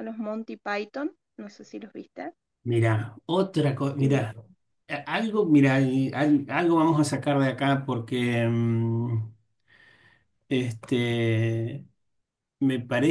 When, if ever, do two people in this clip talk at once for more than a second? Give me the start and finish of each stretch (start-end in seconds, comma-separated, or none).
none